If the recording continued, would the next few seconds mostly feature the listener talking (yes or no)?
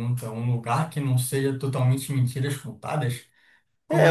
yes